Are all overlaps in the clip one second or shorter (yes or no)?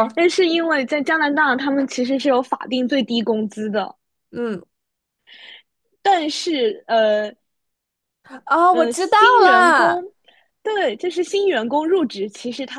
no